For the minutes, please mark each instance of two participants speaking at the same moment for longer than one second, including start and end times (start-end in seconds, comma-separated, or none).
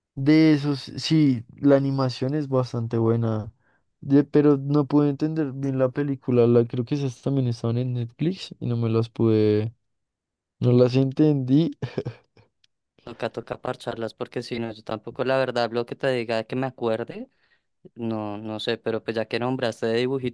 none